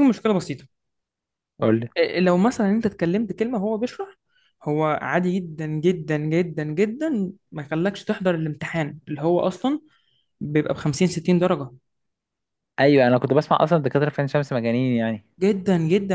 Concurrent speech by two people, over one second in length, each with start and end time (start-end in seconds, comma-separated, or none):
none